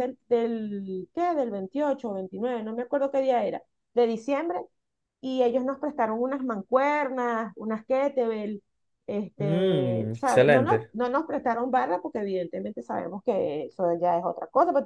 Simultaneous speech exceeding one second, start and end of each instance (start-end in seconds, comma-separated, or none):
9.4-10.9